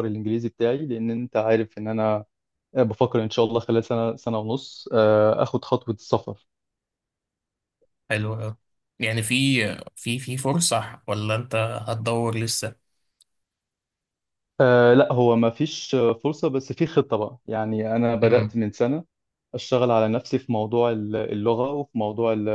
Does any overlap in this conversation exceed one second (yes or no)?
no